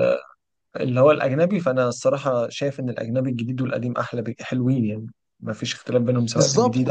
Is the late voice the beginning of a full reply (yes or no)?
yes